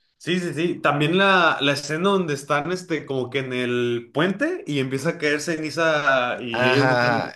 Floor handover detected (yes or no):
yes